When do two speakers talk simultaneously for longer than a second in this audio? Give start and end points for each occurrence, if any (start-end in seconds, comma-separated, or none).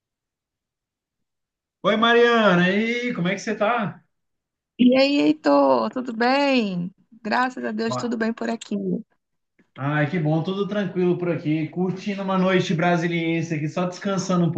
none